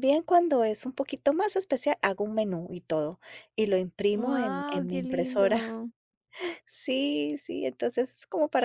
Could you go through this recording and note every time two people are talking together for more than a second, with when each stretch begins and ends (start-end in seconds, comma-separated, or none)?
4.1-5.6